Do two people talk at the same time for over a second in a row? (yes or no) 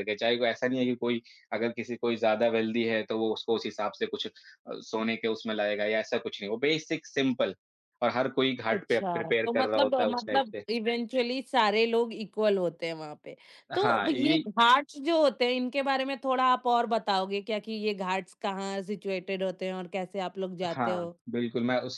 yes